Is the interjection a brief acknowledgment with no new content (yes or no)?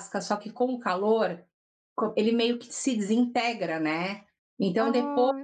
yes